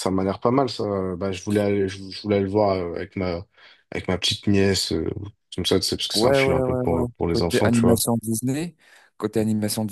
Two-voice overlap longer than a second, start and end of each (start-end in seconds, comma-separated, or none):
6.1-8.0